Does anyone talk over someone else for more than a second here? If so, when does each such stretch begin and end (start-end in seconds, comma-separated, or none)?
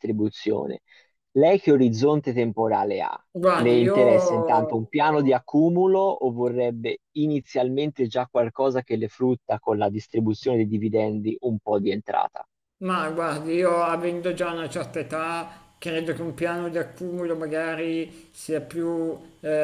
3.6-4.8